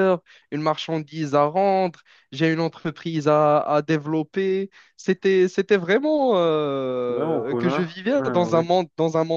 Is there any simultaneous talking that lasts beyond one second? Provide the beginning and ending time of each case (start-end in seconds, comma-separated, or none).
7.1-8.6